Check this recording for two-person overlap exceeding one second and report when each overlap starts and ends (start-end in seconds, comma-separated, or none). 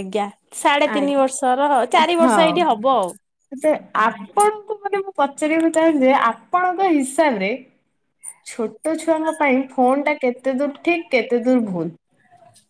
none